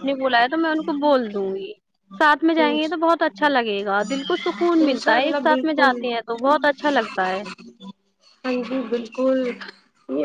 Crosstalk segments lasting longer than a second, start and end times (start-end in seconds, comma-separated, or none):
none